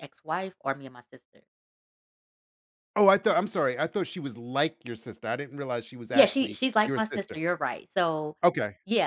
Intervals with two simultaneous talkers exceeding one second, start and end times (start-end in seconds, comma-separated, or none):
6.1-7.4